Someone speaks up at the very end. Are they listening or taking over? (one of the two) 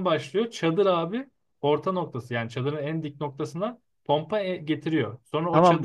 taking over